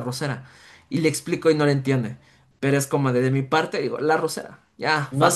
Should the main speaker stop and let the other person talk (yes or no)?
yes